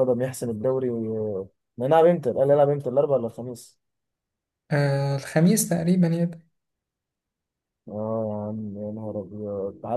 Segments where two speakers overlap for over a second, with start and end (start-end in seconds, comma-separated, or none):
none